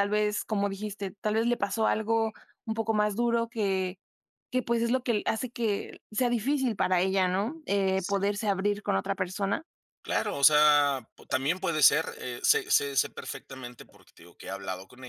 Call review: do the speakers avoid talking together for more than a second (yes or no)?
yes